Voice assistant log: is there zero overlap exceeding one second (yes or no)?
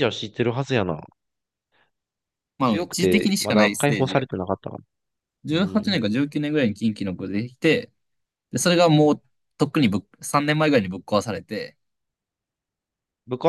no